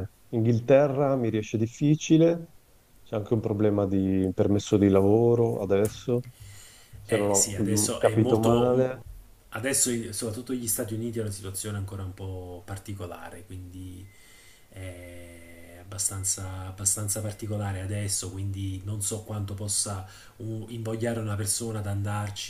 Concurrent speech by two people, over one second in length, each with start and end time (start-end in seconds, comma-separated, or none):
7.0-8.8